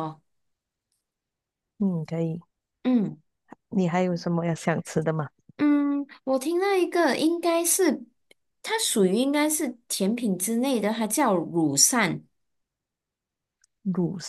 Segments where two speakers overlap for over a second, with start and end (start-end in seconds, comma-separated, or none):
none